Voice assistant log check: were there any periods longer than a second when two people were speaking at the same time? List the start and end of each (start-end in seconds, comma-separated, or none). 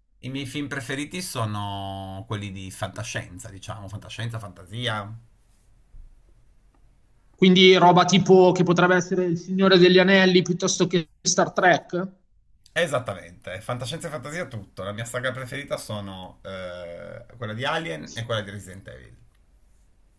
none